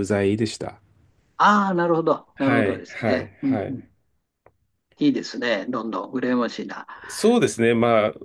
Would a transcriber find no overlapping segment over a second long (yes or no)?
no